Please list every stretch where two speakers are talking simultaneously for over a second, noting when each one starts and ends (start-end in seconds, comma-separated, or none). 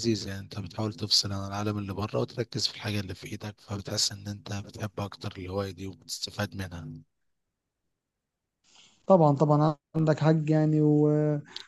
none